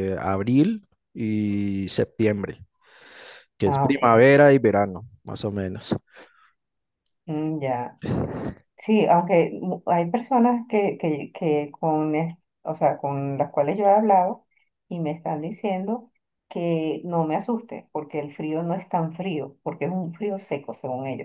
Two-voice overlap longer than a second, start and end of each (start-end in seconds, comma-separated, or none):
none